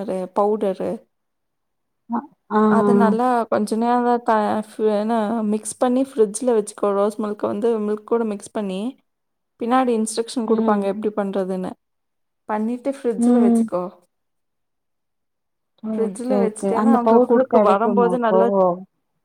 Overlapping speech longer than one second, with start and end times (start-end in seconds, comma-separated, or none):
15.9-18.4